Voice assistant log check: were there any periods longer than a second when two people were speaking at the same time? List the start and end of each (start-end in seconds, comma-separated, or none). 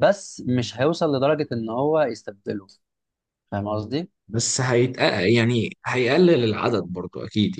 none